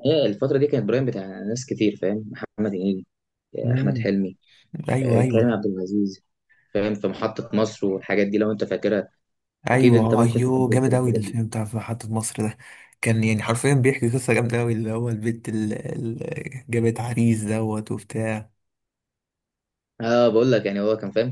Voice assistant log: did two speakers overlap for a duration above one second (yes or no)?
yes